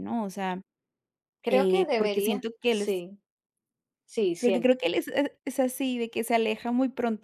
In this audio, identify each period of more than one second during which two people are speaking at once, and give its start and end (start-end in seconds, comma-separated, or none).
1.5-3.0